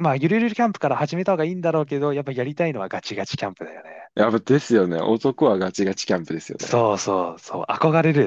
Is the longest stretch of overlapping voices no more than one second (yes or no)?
yes